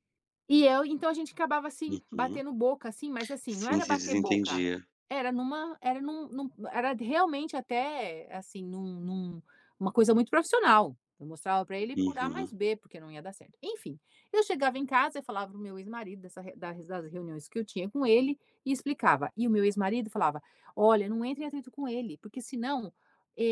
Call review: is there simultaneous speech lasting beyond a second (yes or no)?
yes